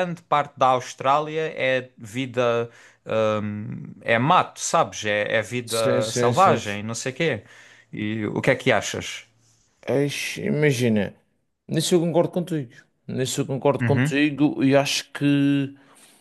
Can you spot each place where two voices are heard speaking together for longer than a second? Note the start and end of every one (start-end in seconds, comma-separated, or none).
5.7-6.9